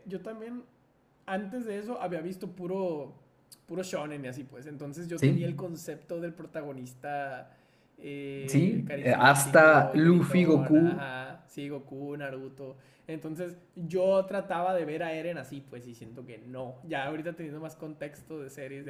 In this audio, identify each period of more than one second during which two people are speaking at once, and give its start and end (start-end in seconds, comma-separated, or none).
8.5-11.1